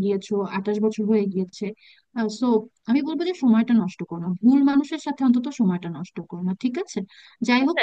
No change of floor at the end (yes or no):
yes